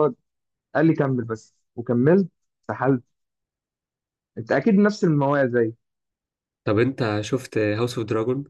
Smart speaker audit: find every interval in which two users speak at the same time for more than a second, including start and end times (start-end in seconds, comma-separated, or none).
none